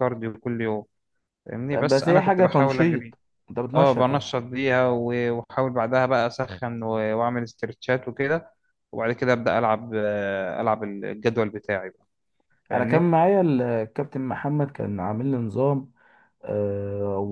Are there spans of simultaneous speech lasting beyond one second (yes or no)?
yes